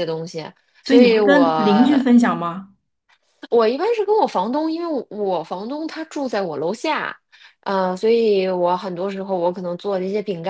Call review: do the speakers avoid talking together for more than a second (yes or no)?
yes